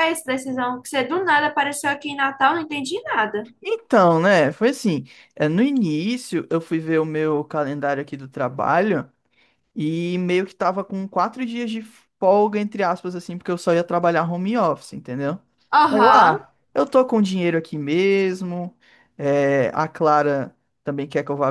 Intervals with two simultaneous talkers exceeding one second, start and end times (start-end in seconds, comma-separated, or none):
none